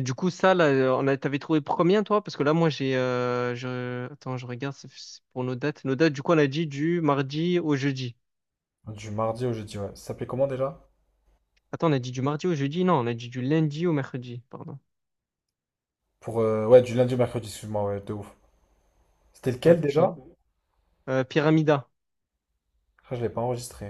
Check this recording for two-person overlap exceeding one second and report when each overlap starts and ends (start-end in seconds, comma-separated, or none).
none